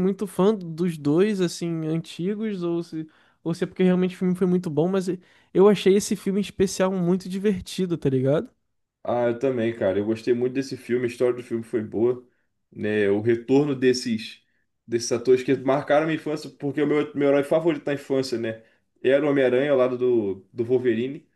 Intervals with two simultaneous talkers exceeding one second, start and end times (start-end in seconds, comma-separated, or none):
none